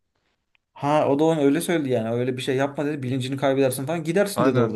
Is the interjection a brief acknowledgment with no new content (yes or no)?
no